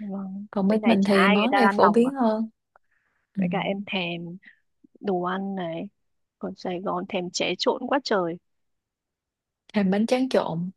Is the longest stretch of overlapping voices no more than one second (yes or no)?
no